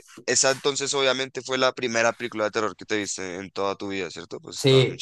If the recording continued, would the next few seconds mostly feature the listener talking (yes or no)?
yes